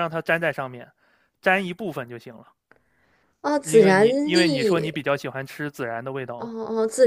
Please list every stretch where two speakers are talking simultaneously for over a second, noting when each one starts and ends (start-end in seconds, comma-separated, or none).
3.6-5.0